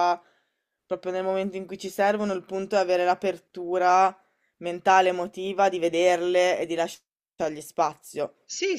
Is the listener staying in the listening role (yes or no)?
no